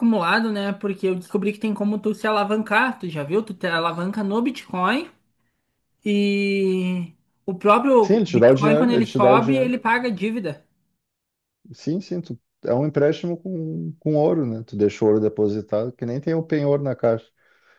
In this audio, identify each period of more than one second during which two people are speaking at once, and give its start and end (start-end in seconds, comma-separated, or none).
8.0-9.7